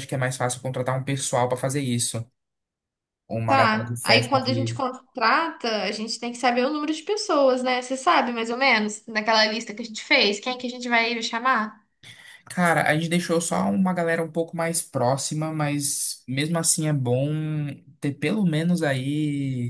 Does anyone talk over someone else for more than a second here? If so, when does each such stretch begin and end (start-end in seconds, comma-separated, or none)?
3.5-4.8